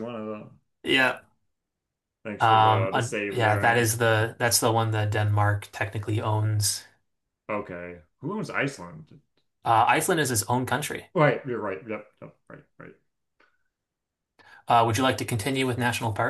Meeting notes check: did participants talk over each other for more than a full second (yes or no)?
yes